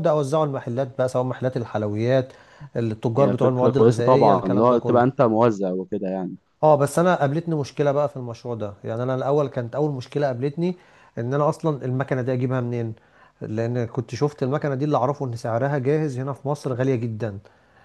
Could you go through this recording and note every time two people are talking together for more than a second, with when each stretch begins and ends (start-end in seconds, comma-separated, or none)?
3.1-5.0